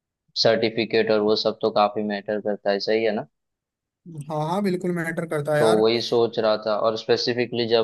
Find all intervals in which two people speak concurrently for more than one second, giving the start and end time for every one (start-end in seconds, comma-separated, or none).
none